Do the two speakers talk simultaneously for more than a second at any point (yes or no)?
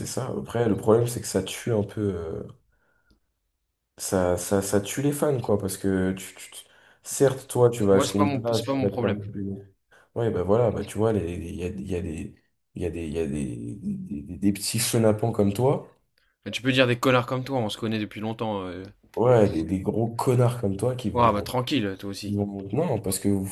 yes